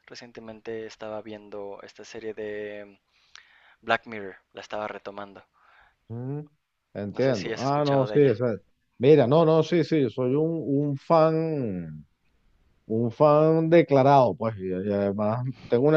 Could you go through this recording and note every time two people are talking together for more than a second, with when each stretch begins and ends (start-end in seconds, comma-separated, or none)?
7.1-8.4